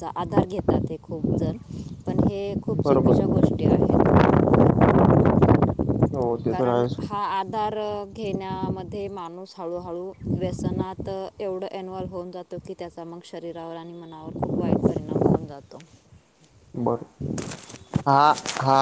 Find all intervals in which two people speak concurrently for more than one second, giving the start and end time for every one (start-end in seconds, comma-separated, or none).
none